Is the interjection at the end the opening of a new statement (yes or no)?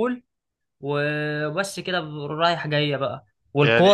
no